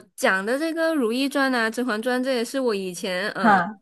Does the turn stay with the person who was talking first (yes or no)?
yes